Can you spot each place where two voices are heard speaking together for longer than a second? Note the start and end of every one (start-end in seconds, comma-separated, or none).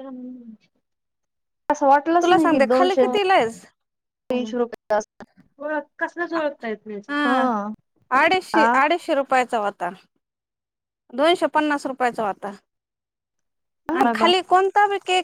2.2-3.6